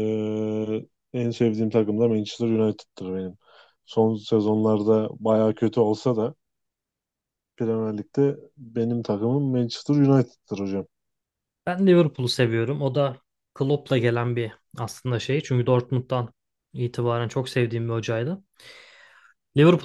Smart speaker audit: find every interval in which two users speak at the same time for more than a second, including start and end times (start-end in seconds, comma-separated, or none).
none